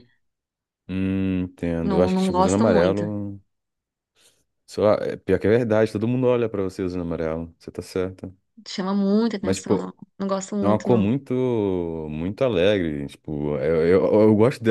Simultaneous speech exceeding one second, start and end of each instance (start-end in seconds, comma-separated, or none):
1.8-3.1